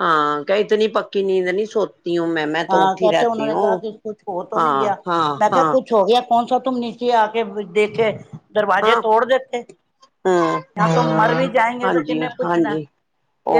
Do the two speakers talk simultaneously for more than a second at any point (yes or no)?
no